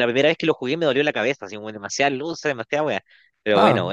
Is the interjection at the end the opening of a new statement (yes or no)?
yes